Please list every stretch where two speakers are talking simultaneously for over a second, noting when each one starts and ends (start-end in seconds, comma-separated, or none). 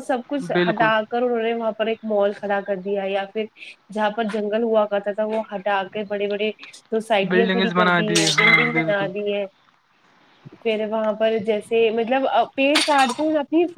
7.3-9.1